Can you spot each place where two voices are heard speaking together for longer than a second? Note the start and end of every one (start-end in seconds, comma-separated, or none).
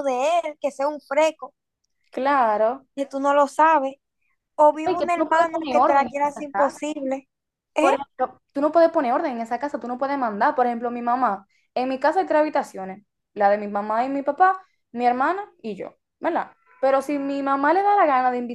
4.8-6.8